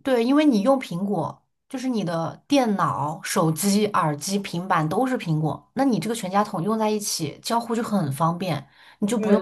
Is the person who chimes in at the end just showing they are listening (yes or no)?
yes